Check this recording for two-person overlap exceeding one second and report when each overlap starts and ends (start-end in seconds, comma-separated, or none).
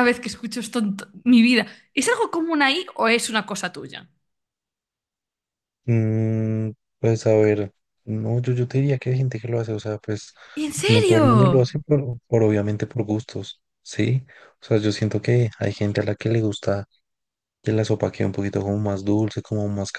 none